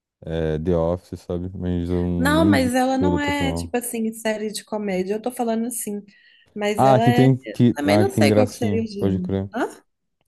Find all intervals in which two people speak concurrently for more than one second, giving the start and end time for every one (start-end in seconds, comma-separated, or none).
2.2-3.8, 6.8-9.5